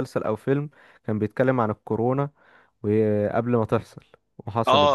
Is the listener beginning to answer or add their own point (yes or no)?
yes